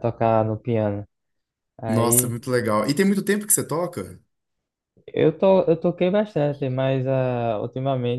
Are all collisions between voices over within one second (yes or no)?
yes